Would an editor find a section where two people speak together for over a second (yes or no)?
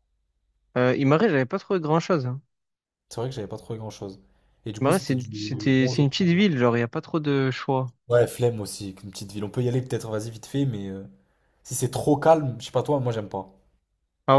yes